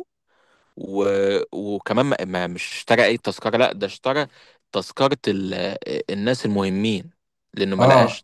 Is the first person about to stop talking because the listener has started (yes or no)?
yes